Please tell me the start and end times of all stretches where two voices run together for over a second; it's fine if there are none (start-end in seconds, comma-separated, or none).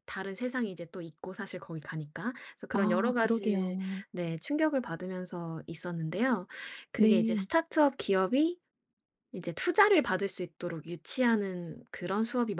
2.7-4.0